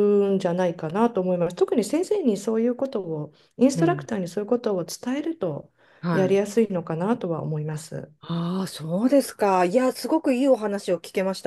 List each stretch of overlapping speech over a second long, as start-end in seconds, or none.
none